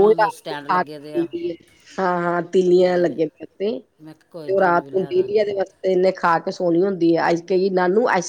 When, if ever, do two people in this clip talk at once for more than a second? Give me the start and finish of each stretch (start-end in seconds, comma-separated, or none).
4.0-5.4